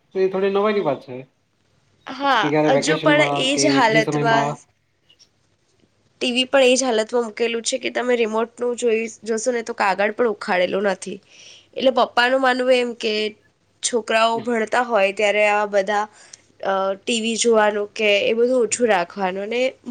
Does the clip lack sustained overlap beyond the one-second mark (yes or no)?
no